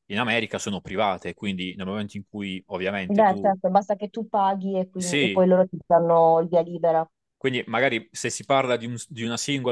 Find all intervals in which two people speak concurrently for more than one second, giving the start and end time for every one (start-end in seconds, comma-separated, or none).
none